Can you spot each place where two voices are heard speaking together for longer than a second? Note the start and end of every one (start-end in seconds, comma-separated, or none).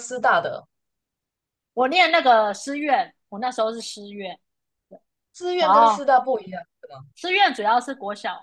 none